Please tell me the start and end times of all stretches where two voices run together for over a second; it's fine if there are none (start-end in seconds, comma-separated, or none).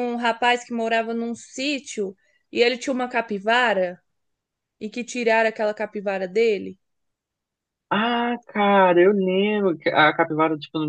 none